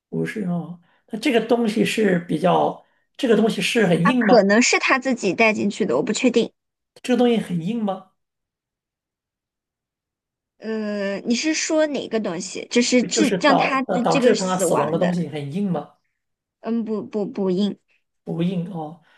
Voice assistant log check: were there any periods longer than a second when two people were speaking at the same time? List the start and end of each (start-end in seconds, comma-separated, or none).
13.1-15.1